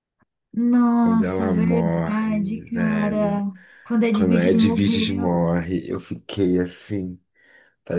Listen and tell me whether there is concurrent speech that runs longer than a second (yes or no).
yes